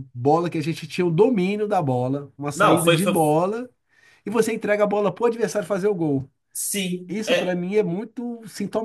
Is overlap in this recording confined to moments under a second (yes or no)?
yes